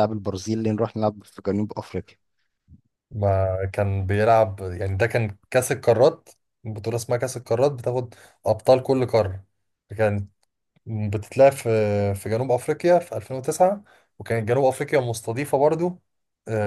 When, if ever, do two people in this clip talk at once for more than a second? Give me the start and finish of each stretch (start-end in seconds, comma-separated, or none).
none